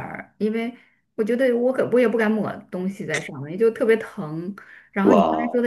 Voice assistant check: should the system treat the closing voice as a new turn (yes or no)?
no